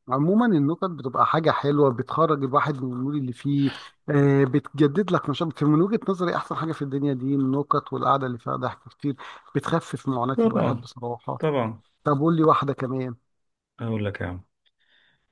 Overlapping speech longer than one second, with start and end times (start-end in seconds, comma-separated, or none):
none